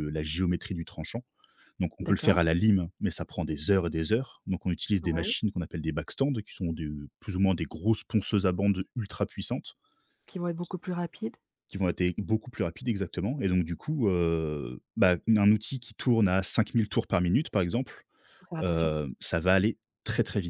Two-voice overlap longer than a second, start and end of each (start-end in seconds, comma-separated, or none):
none